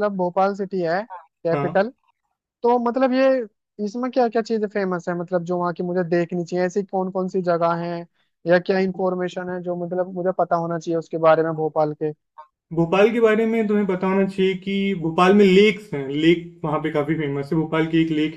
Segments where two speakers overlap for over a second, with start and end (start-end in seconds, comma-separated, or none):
none